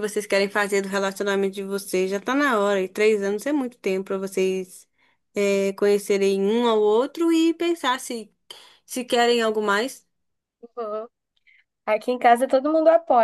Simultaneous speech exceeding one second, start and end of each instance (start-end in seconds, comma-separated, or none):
none